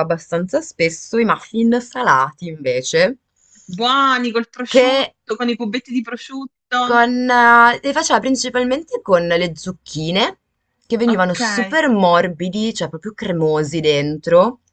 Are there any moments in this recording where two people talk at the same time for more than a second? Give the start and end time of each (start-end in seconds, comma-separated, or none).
none